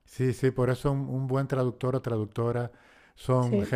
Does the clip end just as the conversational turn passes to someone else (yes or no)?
no